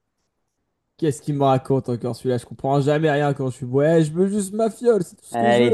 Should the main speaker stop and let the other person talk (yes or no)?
yes